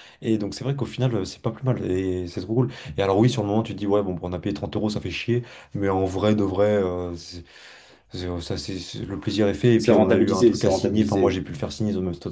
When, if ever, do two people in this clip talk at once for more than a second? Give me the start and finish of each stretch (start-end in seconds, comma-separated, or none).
9.8-11.4